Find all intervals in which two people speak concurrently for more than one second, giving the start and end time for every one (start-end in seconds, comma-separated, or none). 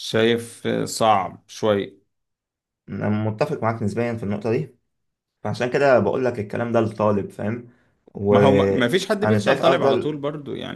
8.3-10.1